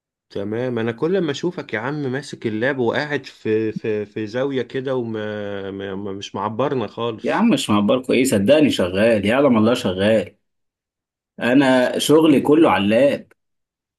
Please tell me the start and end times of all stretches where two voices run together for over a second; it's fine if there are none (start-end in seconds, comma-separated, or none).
none